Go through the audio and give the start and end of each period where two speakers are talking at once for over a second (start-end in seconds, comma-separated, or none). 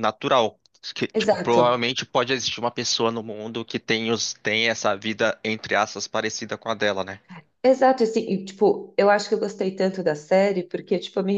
none